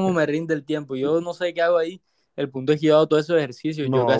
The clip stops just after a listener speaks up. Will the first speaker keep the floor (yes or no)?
no